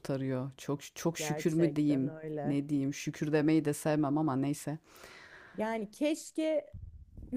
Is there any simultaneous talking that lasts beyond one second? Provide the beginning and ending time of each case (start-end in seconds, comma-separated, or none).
1.2-2.6